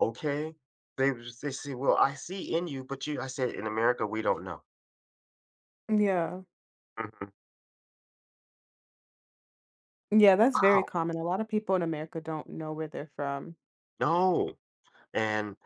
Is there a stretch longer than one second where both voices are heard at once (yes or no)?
no